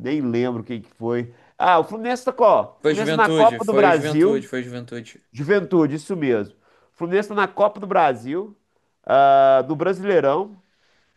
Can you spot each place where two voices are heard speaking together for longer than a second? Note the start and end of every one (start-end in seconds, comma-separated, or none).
2.8-4.5